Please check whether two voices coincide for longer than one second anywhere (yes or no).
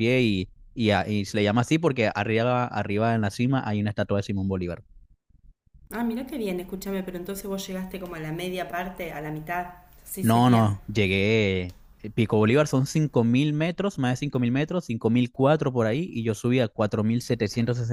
no